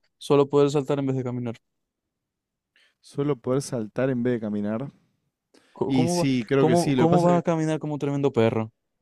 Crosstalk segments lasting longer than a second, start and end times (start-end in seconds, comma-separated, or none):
5.8-7.4